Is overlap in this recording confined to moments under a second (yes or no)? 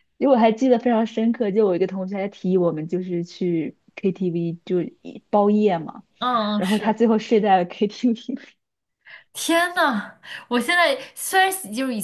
yes